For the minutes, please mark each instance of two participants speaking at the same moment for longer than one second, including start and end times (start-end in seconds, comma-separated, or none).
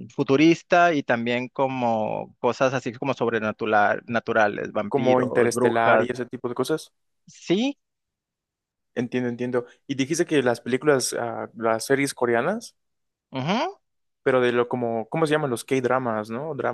4.9-6.1